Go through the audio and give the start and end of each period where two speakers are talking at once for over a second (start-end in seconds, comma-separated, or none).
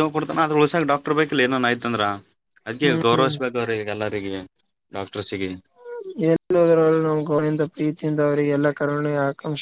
none